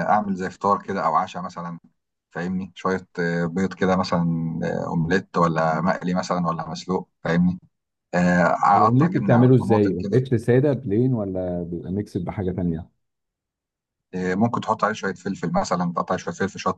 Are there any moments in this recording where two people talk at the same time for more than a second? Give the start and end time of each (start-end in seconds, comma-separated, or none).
8.9-10.2